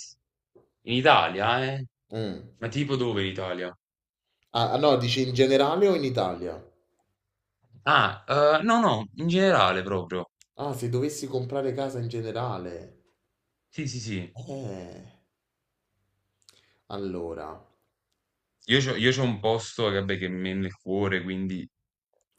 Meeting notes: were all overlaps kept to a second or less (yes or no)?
yes